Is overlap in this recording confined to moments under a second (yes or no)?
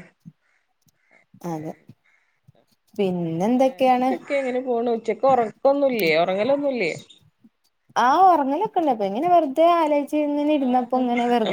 yes